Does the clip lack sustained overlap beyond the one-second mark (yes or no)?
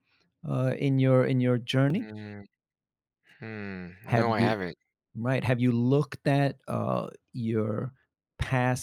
yes